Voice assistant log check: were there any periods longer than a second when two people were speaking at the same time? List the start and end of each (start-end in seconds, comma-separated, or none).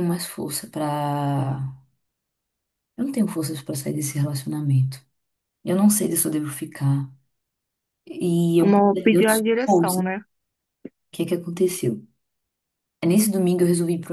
8.6-10.0